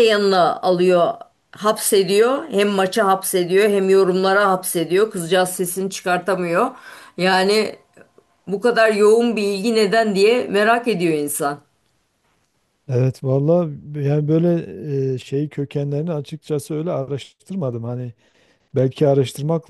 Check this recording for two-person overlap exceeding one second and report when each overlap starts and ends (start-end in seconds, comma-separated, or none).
none